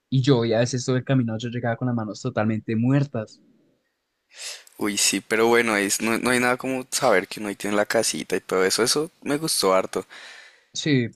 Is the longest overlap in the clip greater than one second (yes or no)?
no